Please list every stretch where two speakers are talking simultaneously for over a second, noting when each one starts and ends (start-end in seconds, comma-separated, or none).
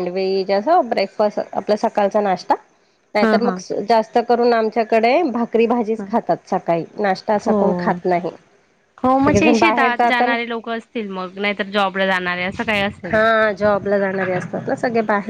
9.2-10.4